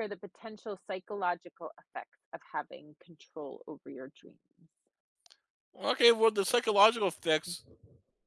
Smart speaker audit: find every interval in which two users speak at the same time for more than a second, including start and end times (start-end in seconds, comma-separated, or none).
none